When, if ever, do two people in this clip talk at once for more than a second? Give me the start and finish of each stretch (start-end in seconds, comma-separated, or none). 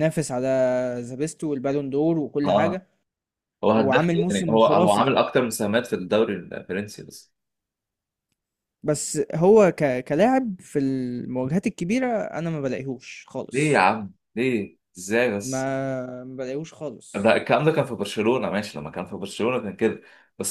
3.7-5.1